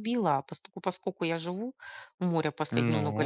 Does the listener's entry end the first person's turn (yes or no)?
no